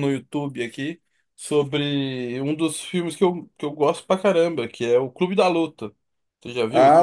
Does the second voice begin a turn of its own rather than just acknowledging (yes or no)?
yes